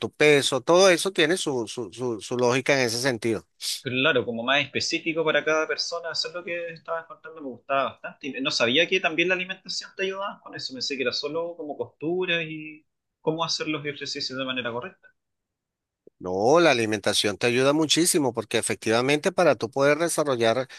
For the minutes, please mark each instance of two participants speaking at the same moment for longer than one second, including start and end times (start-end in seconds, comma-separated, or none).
none